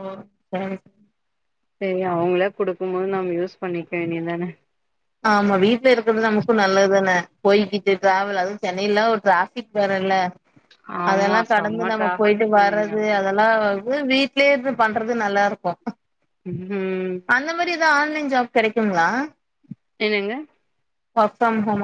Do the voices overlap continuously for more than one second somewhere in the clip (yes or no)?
yes